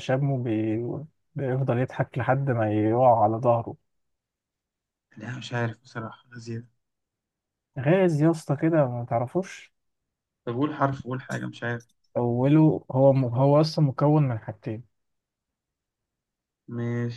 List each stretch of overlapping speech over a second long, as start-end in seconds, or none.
none